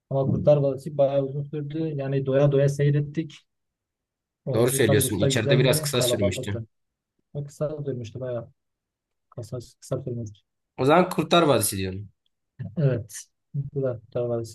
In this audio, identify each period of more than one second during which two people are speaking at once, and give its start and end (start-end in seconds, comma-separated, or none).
4.5-6.6